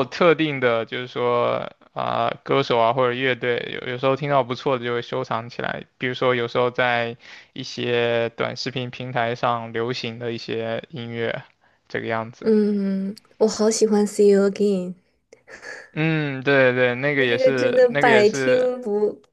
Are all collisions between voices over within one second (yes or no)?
no